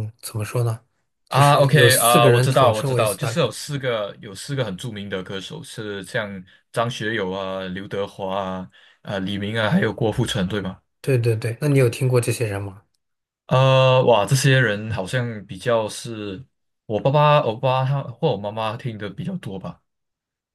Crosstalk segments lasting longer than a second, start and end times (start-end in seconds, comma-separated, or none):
1.3-3.4